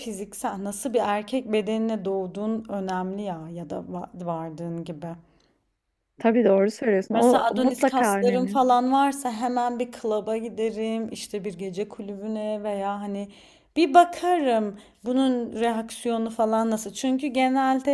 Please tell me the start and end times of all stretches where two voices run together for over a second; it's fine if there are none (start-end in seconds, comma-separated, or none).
7.1-8.6